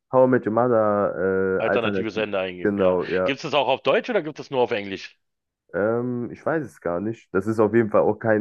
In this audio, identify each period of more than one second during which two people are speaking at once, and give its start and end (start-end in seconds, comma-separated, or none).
1.6-3.3